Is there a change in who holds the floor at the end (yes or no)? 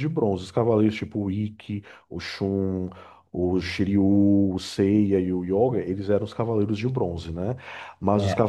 no